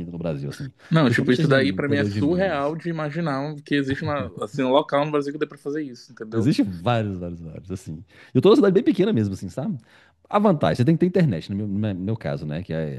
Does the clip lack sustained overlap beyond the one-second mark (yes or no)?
no